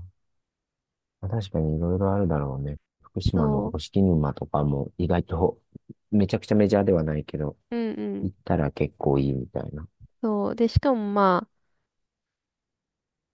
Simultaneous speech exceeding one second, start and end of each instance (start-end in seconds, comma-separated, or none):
none